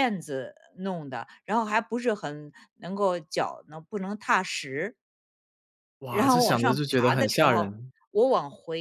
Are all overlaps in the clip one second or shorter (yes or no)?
no